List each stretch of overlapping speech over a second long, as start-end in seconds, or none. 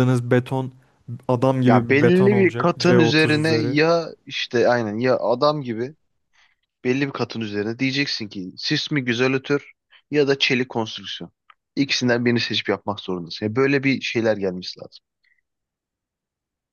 1.7-3.8